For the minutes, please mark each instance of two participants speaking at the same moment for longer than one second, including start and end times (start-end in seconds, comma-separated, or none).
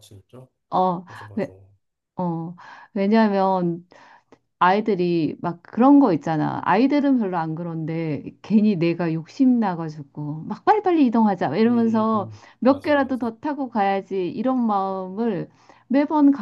11.6-13.3